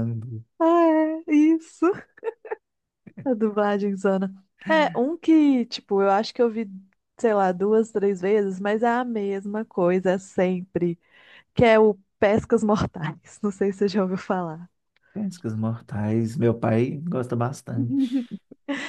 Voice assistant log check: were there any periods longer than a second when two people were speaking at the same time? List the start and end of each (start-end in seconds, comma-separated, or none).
none